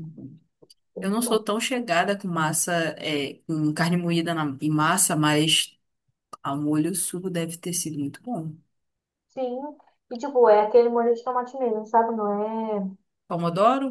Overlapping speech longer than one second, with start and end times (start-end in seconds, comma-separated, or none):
none